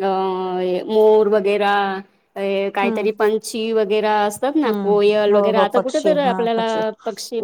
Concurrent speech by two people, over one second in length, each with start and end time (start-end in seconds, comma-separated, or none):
4.7-6.7